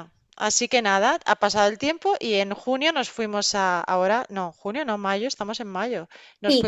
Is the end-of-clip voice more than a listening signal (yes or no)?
no